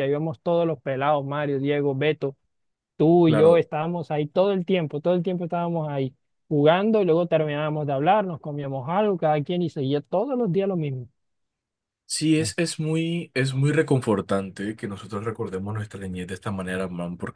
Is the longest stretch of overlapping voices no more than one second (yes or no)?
yes